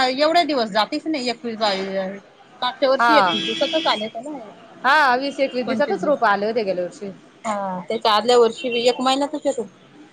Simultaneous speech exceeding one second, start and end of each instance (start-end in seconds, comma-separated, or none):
4.8-6.2